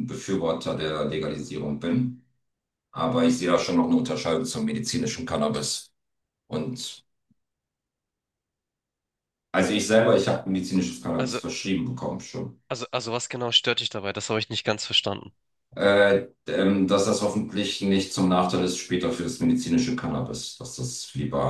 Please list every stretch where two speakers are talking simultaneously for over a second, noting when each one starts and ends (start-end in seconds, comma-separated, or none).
none